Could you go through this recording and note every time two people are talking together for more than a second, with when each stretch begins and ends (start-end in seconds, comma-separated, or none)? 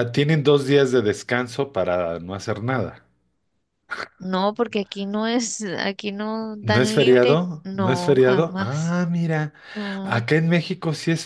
6.6-9.0